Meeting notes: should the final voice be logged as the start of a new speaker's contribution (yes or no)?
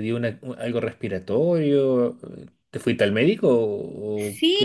yes